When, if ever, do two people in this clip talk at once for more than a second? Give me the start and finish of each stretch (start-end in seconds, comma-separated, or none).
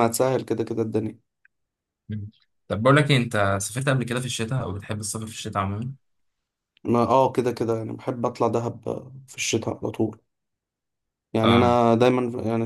none